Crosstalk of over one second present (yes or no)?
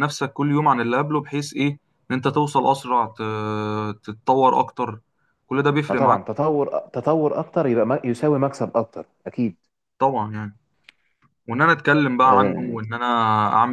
no